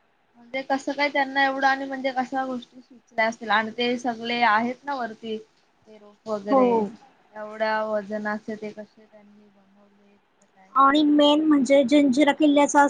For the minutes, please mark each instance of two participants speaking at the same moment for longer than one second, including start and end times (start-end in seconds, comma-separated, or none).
none